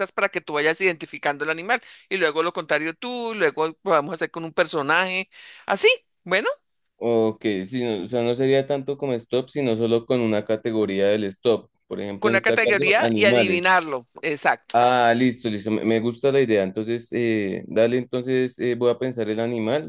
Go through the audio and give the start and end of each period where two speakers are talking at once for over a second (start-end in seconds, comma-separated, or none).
12.2-13.6